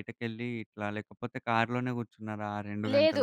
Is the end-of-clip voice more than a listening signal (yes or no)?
yes